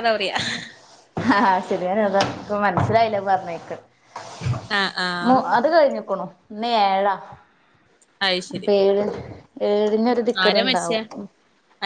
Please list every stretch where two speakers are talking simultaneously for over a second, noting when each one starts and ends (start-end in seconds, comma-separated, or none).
none